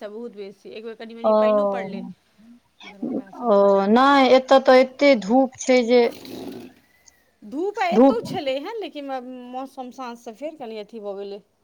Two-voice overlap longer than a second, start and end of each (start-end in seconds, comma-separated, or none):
none